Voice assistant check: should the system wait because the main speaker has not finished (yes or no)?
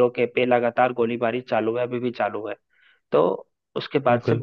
yes